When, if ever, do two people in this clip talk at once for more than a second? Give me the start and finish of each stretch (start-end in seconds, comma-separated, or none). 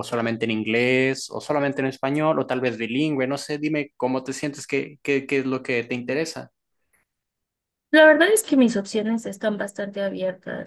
none